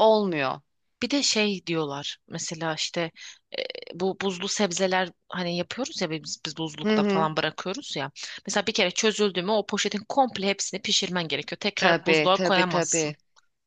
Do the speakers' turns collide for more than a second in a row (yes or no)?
yes